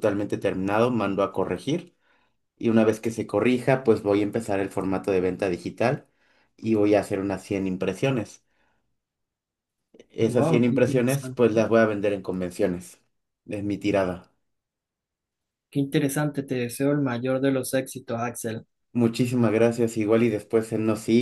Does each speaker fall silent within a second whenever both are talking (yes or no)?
no